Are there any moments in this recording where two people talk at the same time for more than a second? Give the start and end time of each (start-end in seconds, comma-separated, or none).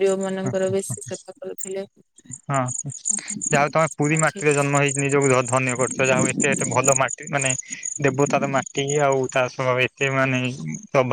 3.1-4.7